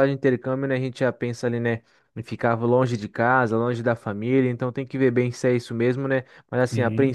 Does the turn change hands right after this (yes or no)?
no